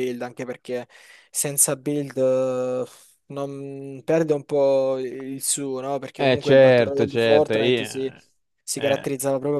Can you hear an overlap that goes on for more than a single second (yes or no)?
yes